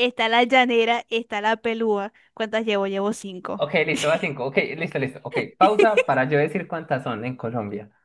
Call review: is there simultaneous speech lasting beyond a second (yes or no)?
no